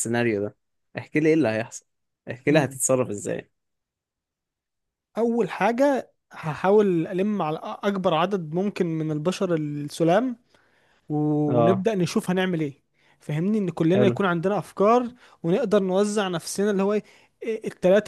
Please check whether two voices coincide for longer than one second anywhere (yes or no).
no